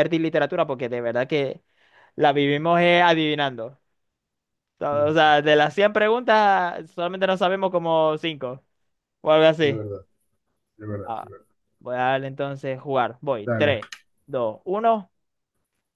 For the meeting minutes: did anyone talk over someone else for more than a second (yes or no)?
no